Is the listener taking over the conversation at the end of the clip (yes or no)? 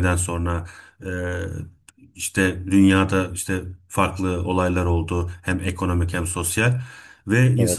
no